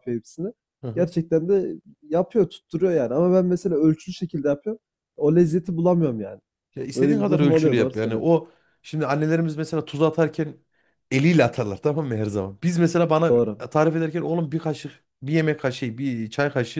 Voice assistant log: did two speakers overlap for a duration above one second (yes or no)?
yes